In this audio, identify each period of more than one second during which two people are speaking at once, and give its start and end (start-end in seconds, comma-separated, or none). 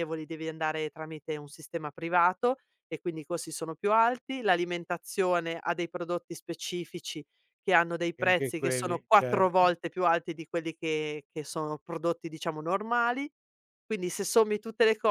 8.2-9.7